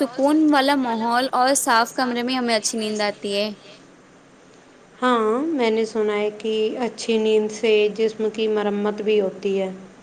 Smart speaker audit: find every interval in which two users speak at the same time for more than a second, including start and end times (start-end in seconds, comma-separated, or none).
none